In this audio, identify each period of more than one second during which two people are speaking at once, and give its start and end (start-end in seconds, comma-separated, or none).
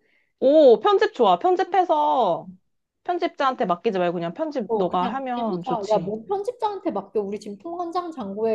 4.7-6.1